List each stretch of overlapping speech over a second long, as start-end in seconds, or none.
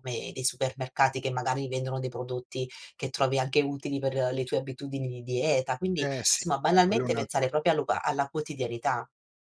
6.0-7.5